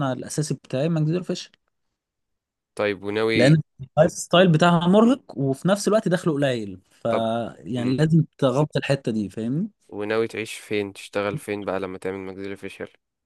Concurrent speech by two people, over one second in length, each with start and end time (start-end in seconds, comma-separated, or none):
none